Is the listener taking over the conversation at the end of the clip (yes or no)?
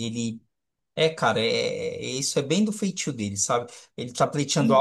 no